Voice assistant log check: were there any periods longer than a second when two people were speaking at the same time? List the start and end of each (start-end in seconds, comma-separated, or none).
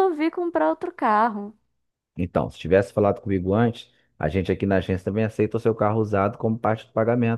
none